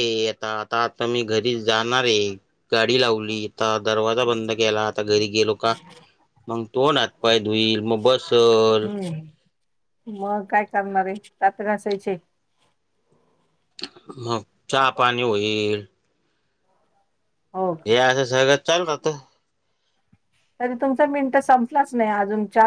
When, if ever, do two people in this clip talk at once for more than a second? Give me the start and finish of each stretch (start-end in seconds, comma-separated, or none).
none